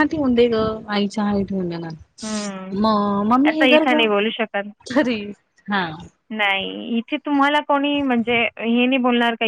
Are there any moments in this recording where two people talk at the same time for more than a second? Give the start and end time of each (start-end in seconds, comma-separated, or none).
none